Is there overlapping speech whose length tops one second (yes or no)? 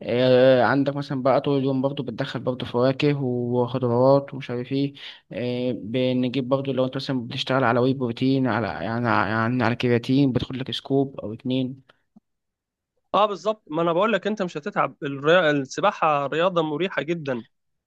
no